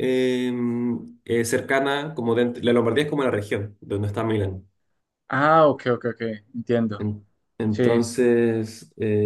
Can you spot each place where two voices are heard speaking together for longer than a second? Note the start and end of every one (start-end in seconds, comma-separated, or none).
none